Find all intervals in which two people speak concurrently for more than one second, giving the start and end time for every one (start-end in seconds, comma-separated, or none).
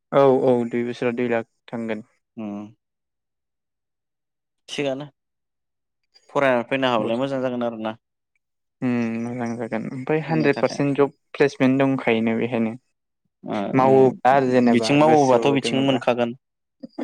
13.8-16.0